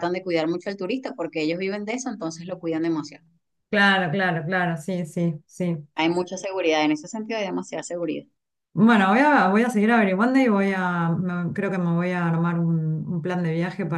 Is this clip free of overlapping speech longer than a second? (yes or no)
yes